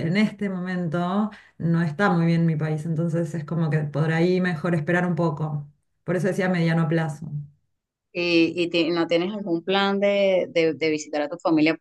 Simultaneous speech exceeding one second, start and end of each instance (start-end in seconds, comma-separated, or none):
none